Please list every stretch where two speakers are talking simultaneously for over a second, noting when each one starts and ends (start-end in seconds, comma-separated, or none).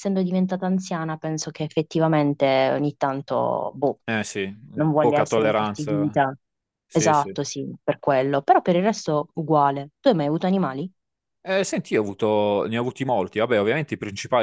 5.0-6.2